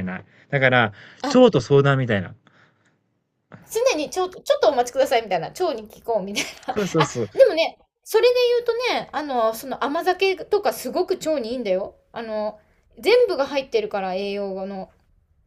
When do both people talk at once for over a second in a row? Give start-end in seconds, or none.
none